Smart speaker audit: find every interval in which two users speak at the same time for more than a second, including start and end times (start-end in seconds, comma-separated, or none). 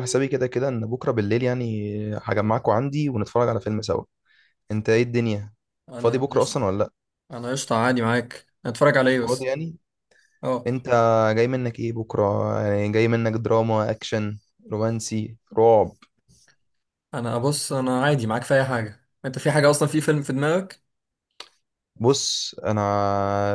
none